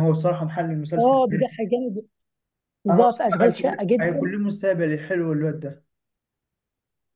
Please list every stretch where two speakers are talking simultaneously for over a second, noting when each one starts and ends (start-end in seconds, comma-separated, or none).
2.9-4.3